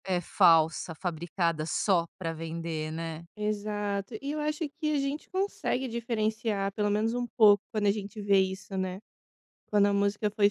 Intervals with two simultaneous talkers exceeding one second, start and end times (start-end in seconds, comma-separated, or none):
none